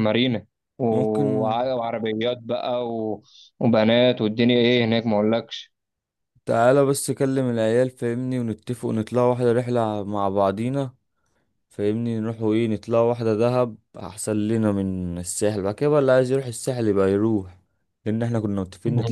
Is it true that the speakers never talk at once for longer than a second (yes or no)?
yes